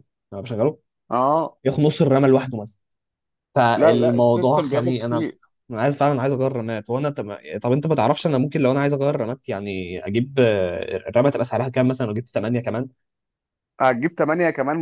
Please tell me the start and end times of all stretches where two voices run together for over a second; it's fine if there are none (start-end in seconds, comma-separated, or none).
3.8-5.2